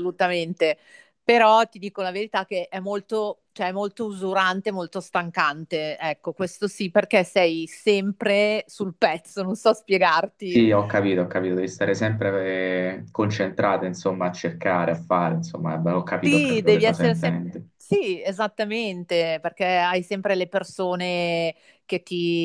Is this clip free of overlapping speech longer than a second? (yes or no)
no